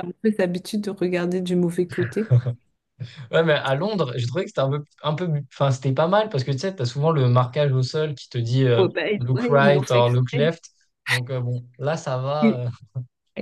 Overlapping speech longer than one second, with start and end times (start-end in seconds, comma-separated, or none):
8.8-10.5